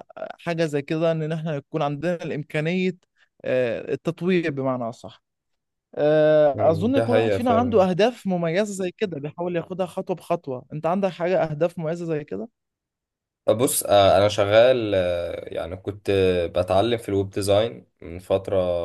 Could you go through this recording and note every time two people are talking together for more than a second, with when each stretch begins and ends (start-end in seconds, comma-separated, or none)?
6.5-7.8